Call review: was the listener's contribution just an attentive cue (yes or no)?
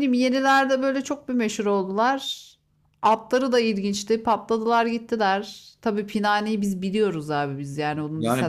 no